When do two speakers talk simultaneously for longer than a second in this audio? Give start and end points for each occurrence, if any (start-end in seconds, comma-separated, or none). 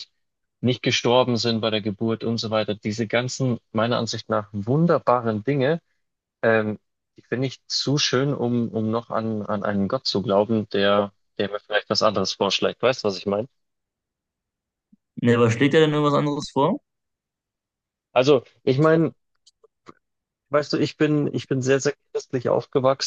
none